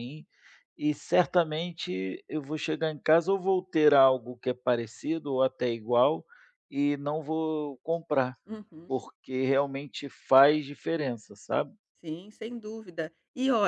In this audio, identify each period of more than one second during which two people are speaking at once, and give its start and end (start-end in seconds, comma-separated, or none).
none